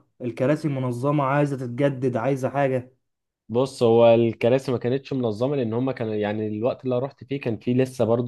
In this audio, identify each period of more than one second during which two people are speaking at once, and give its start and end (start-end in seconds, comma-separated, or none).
none